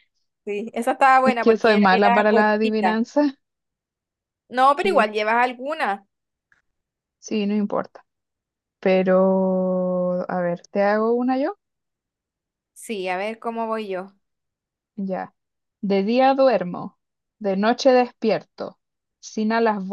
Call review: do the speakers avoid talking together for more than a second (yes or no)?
no